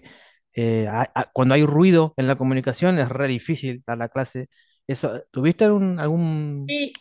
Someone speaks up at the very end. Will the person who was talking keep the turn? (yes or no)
no